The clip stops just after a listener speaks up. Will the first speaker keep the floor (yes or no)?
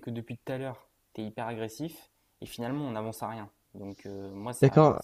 no